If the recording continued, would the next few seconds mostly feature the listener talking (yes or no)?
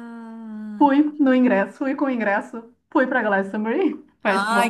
yes